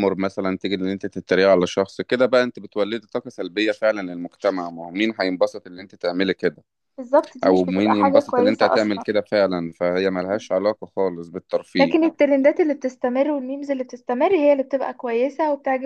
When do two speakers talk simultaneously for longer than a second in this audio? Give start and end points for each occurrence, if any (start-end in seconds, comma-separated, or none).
7.4-9.1